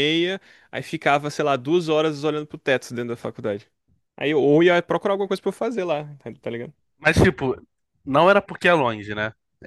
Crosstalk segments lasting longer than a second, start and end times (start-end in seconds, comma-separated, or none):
none